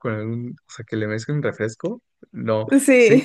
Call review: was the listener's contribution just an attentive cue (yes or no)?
yes